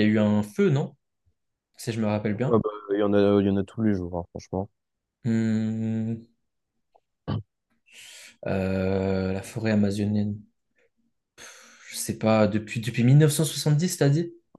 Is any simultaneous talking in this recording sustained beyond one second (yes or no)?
no